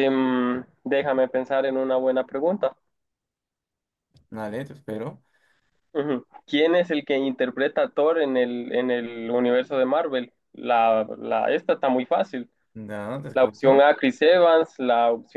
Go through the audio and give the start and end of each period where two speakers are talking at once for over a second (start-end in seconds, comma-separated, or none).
none